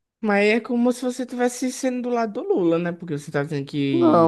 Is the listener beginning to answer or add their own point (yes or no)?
yes